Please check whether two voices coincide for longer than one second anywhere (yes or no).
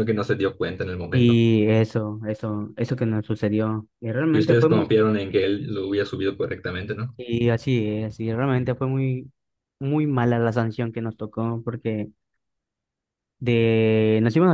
no